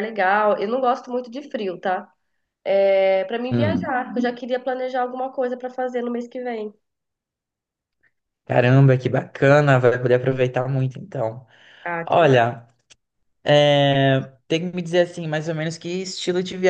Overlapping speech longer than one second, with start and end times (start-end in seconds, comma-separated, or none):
none